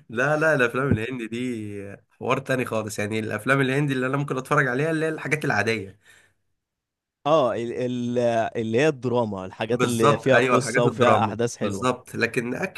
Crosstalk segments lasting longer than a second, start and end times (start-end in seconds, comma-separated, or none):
9.7-11.9